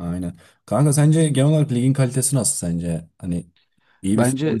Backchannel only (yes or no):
no